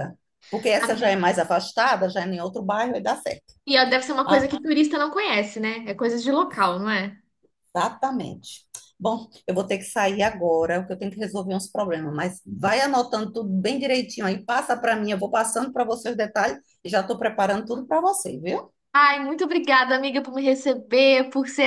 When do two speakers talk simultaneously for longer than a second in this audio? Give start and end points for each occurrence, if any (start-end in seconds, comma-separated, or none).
none